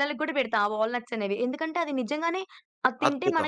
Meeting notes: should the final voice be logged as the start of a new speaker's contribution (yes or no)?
no